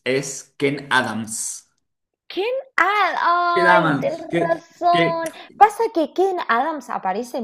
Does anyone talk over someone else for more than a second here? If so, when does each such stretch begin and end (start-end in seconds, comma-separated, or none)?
3.5-5.2